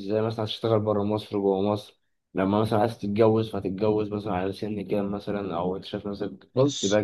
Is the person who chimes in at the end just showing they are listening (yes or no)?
no